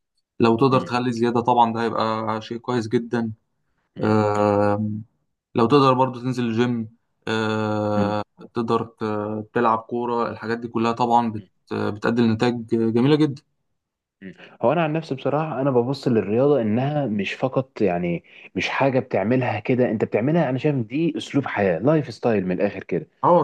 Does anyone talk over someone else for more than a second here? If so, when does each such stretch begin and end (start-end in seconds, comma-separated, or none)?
none